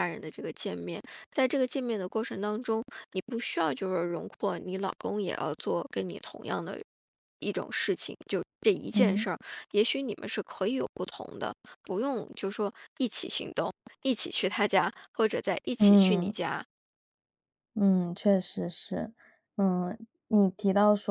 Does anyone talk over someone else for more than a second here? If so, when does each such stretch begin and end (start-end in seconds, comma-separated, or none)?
none